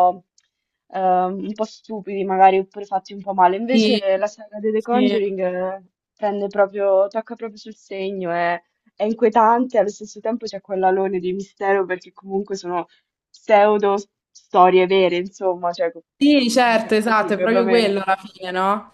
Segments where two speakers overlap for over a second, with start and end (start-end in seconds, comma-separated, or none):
16.2-18.0